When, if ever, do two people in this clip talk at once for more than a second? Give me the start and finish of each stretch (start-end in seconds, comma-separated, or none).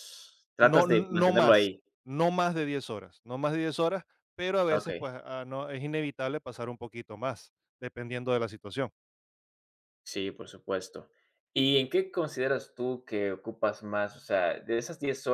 0.6-1.8